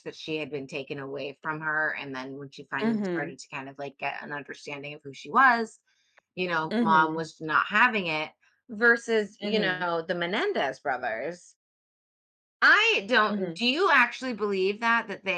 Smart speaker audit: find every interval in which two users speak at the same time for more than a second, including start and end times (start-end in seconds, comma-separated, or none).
none